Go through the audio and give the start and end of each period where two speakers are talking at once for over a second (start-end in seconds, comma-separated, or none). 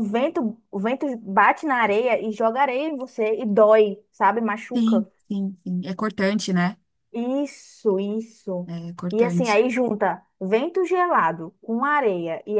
none